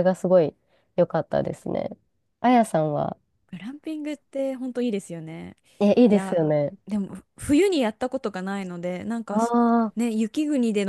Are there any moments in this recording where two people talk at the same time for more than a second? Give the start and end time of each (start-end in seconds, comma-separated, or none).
none